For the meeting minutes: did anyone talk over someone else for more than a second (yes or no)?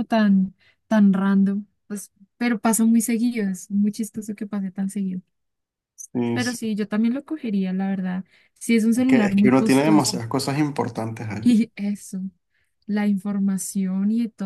yes